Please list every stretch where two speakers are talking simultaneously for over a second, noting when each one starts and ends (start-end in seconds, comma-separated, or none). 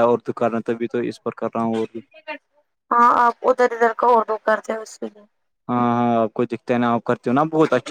none